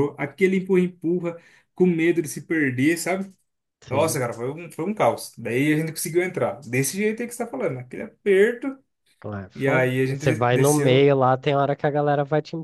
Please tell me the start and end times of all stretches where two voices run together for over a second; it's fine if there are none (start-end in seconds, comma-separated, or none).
9.5-11.1